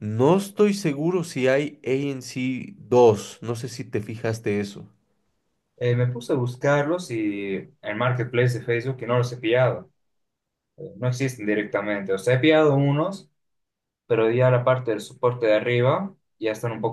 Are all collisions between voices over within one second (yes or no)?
yes